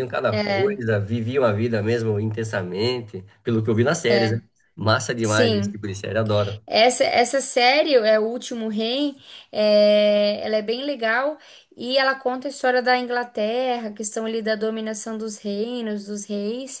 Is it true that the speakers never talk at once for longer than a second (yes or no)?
yes